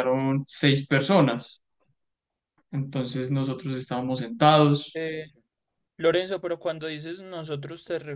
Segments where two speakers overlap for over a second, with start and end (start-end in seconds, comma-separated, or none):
none